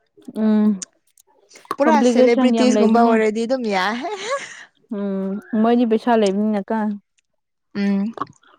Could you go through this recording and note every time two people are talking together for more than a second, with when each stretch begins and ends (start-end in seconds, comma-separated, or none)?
1.8-3.1